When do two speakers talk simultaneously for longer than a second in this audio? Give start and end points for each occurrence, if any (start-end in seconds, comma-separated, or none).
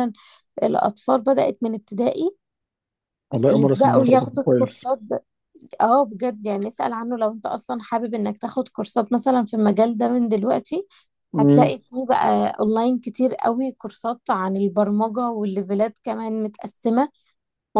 3.5-4.8